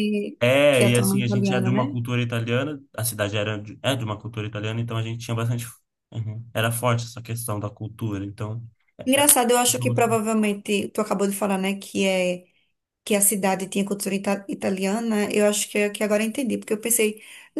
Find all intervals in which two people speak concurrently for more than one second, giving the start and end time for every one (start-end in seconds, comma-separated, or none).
0.7-2.0